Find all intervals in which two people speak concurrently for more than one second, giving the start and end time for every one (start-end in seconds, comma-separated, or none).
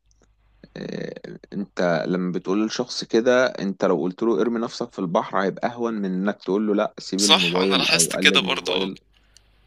7.2-8.9